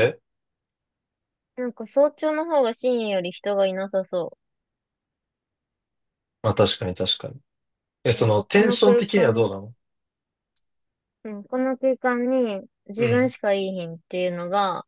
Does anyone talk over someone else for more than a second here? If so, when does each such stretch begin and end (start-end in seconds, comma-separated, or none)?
8.1-9.5